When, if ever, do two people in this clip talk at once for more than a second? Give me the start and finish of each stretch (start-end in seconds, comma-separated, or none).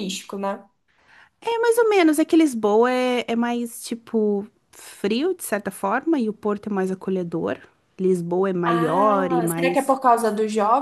8.7-9.9